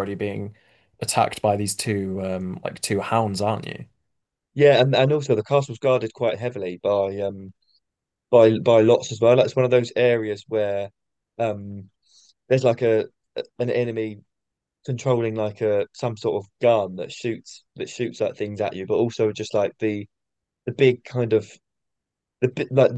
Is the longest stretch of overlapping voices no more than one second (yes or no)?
yes